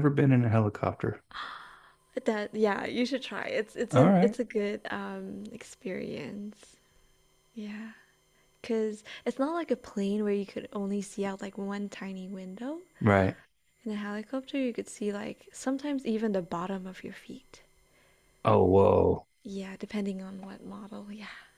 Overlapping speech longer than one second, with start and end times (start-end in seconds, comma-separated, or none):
none